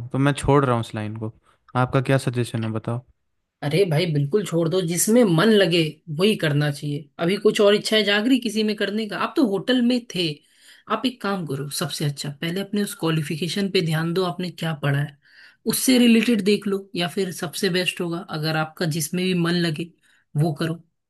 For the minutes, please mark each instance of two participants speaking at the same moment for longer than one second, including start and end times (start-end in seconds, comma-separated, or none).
none